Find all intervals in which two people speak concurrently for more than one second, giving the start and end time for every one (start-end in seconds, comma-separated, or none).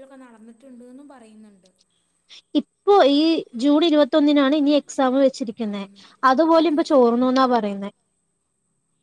none